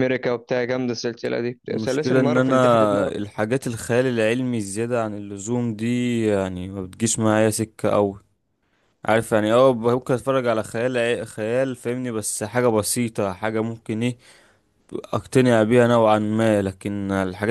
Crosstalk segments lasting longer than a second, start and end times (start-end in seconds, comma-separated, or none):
1.7-3.1